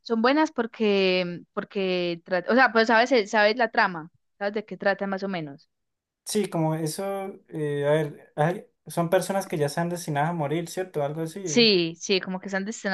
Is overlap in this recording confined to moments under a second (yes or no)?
yes